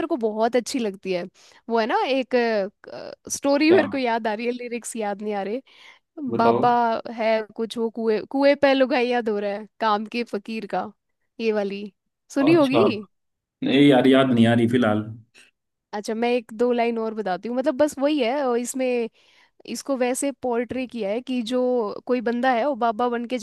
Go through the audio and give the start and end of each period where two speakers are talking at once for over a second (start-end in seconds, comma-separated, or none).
none